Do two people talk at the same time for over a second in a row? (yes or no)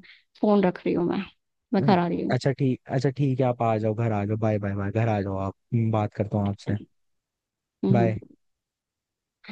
no